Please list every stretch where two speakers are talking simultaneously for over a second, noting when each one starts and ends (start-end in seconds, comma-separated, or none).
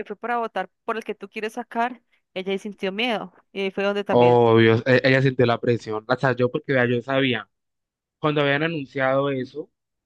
none